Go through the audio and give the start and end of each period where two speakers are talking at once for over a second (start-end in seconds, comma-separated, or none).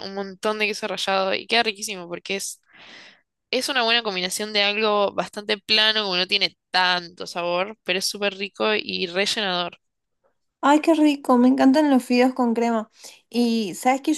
none